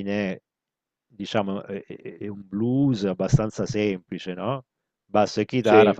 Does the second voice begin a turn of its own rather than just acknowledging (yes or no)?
no